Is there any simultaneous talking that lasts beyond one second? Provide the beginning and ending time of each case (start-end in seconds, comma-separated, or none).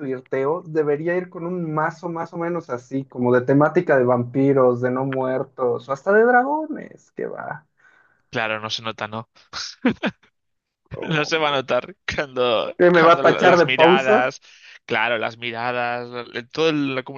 12.8-14.3